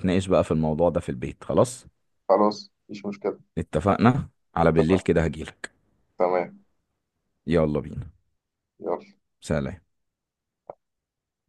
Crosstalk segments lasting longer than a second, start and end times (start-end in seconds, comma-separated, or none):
none